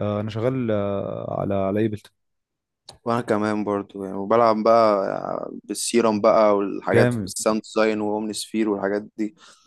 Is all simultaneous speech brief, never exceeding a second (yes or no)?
yes